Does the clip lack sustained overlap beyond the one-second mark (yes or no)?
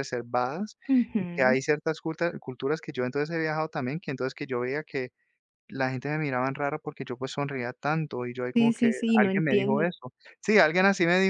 no